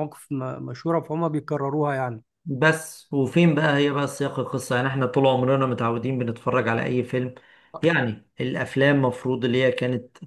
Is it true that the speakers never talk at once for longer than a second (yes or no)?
yes